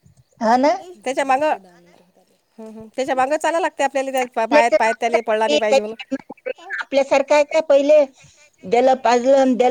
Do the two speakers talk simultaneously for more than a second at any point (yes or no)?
yes